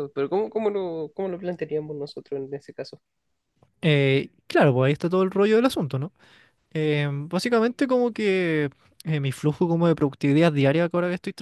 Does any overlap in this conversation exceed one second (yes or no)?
no